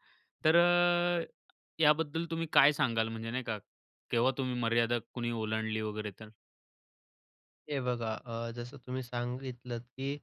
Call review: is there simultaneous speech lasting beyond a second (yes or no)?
no